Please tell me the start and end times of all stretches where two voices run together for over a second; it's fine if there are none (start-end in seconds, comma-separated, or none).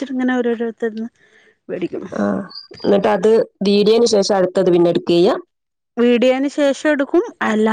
none